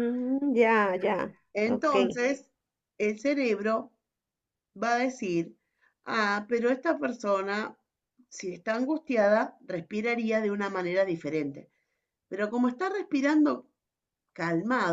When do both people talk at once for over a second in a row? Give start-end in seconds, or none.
none